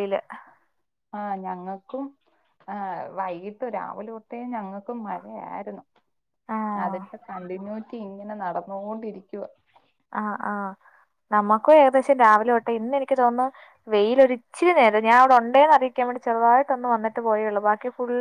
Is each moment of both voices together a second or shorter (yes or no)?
yes